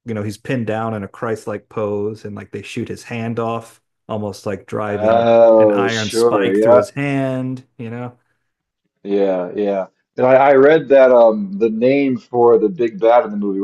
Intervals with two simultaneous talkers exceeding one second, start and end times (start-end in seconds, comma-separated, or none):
4.9-6.8